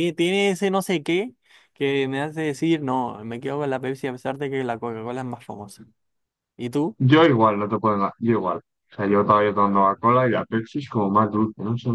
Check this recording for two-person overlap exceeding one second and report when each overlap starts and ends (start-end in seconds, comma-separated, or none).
none